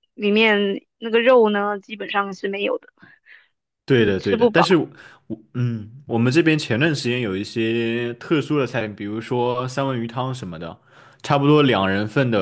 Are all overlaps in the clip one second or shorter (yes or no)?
yes